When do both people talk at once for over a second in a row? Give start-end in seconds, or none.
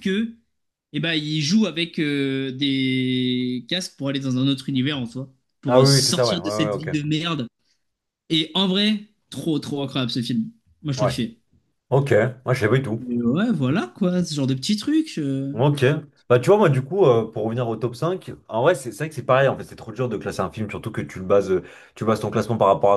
5.7-7.0